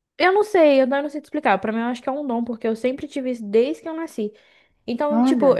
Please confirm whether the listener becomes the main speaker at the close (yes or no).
no